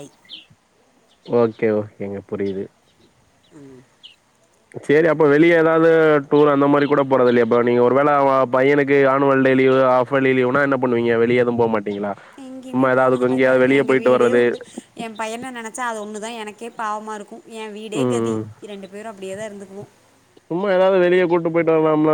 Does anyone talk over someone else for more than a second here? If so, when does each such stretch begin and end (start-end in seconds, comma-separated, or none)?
none